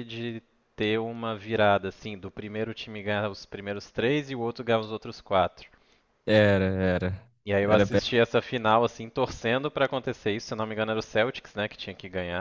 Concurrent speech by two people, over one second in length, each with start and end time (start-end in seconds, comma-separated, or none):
none